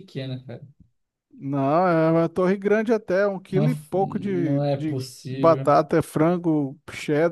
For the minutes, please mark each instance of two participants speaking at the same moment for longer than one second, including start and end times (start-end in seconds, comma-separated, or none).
3.5-5.7